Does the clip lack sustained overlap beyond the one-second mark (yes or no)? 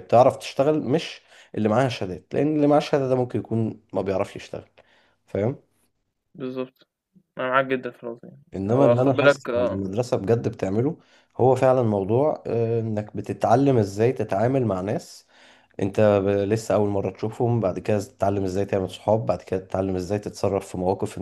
no